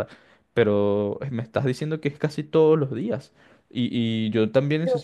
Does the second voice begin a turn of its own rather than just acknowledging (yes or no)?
no